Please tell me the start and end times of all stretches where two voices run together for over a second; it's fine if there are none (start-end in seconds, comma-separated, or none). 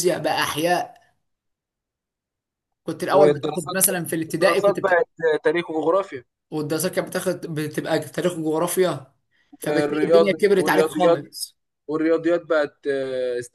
3.1-5.0, 9.7-11.3